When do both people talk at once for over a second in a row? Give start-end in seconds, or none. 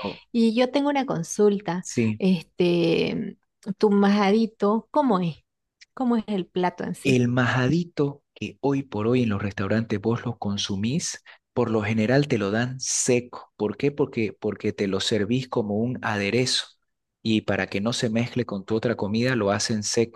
none